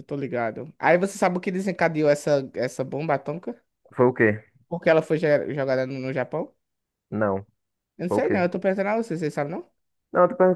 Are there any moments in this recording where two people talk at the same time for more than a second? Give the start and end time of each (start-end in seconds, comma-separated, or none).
none